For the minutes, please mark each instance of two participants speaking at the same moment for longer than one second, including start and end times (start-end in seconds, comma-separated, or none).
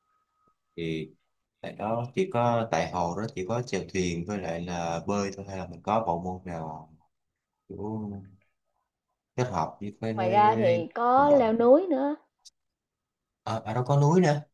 10.1-11.5